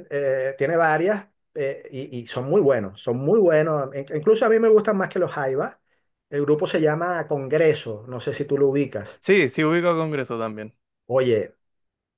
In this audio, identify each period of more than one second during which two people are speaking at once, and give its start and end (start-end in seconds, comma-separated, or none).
none